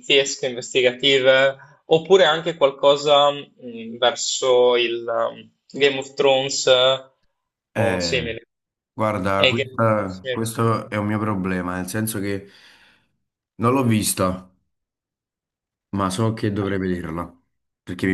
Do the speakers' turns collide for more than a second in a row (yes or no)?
yes